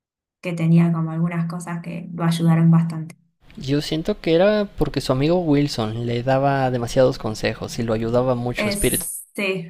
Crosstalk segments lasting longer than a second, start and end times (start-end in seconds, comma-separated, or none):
none